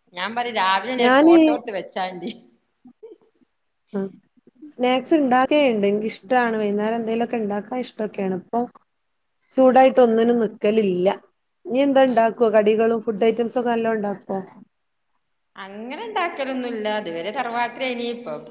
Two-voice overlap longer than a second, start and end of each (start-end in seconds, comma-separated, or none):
none